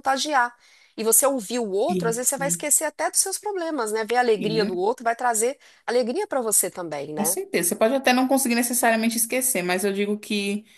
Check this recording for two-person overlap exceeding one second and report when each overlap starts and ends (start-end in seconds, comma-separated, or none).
none